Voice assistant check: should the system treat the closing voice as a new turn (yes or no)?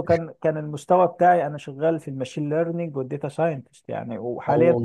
no